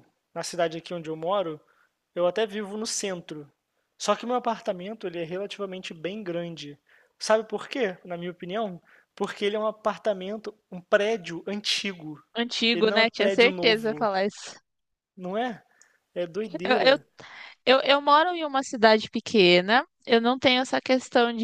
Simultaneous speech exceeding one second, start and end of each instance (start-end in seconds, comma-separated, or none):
12.7-14.1